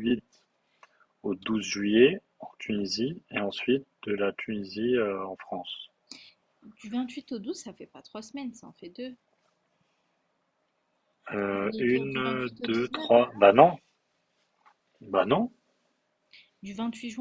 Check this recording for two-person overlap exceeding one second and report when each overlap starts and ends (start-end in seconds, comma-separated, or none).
11.5-13.4